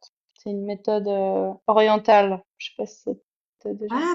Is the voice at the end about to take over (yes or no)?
yes